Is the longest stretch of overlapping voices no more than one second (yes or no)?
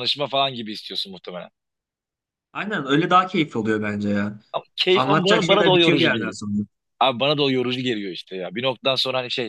no